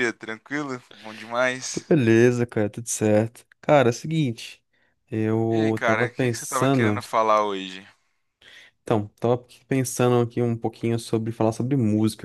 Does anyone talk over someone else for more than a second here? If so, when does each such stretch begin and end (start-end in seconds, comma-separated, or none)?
5.5-7.1